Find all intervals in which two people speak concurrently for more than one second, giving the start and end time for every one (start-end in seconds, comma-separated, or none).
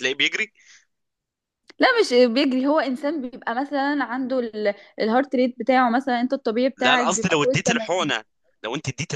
6.8-8.1